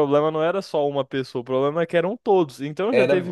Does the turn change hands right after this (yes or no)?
no